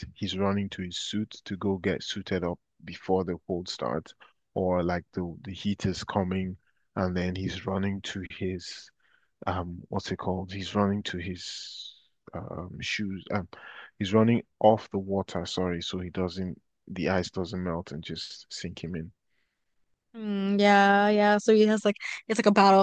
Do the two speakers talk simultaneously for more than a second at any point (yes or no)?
no